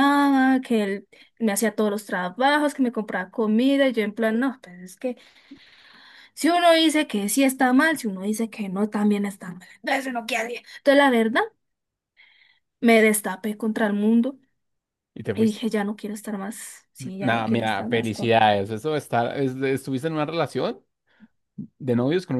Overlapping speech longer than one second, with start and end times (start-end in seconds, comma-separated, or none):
17.2-18.4